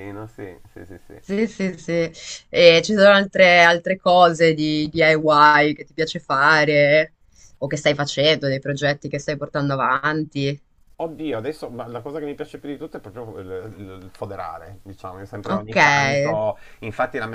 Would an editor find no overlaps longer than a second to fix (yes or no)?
yes